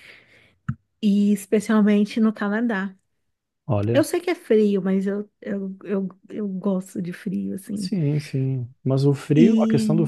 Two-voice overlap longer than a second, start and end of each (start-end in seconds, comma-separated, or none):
none